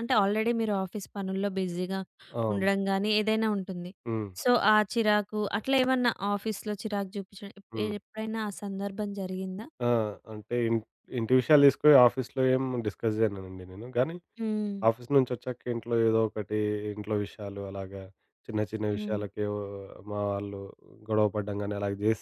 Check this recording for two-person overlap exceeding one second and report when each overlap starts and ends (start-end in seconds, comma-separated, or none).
none